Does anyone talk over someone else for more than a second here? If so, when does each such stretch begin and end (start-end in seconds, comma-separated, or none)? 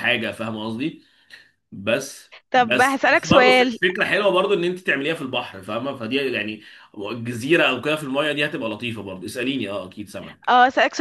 2.5-3.8